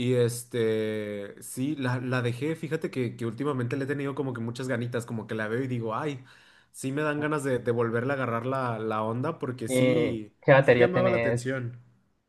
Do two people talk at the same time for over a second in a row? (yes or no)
yes